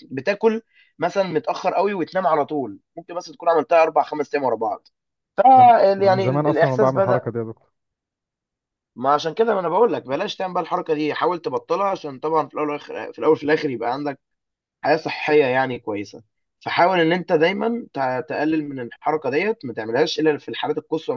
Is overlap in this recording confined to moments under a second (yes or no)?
no